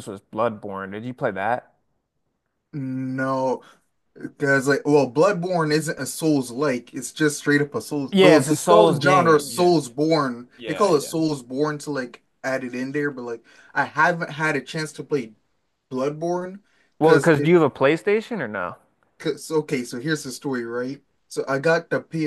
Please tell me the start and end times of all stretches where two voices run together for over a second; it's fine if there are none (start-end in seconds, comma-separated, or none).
8.1-9.7